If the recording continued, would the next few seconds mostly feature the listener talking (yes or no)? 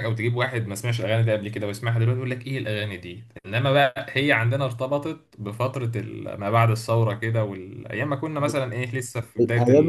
yes